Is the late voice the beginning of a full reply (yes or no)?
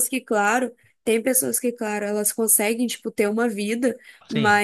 no